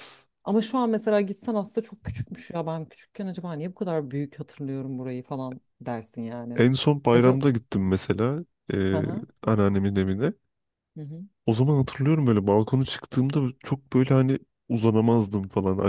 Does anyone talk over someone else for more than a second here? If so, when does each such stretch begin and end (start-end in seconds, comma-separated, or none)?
none